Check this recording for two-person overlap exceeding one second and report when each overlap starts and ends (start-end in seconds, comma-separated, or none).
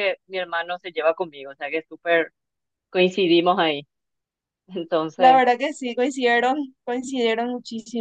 none